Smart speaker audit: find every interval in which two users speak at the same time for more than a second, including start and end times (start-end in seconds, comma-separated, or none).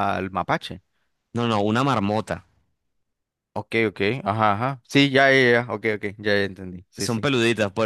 none